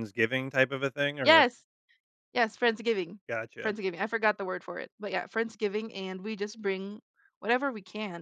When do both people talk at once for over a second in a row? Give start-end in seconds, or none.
none